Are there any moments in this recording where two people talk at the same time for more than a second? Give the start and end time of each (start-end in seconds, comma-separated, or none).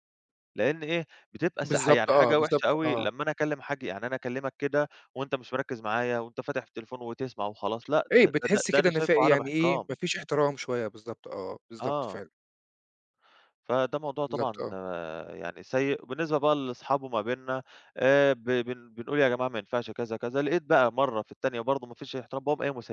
1.6-3.1, 8.1-9.9